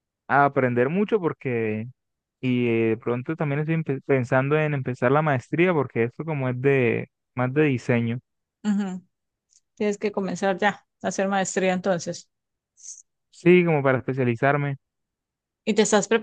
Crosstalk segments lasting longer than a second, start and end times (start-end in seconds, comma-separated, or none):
none